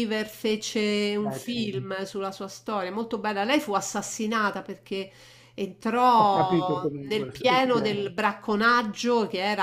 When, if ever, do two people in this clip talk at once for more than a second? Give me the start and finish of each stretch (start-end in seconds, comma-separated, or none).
6.2-7.9